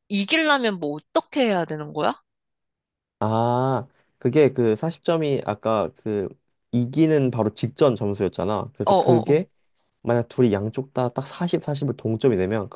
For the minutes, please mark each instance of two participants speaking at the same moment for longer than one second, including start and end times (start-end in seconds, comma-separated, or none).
none